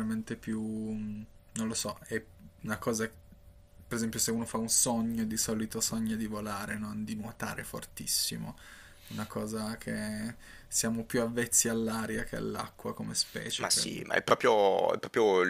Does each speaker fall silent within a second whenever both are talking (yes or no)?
yes